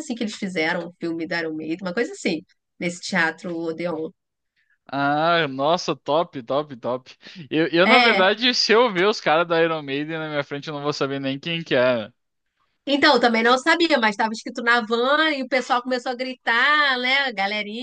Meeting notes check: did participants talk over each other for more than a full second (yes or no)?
no